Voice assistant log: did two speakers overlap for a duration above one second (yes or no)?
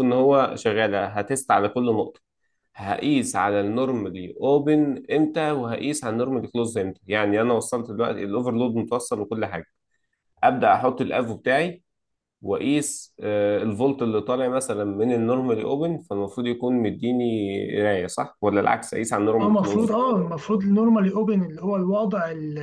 no